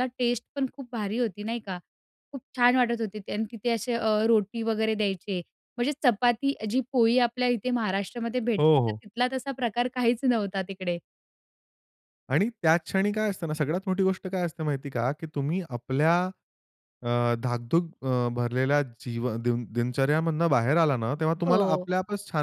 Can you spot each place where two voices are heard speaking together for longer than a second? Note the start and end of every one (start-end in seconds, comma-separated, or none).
none